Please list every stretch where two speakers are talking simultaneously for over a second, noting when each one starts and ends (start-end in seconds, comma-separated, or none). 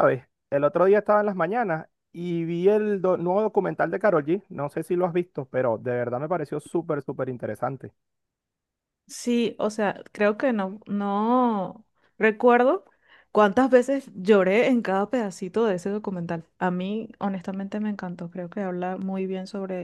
none